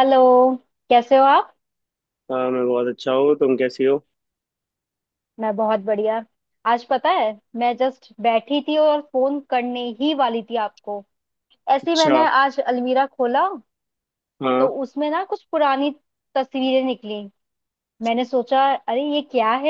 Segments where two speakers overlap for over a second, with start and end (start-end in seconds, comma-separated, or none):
none